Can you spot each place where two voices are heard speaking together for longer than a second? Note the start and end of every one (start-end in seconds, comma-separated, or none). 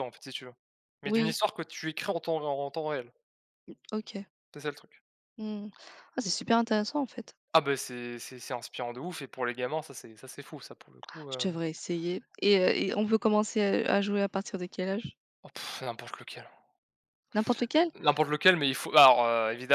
none